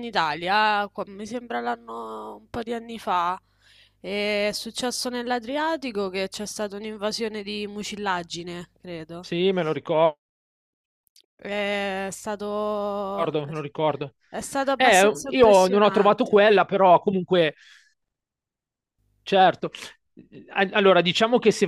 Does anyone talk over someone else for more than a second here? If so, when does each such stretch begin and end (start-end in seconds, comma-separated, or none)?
14.8-16.5